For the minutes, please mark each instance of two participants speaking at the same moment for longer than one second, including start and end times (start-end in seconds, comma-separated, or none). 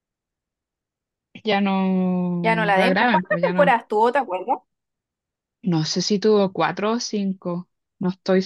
2.4-3.8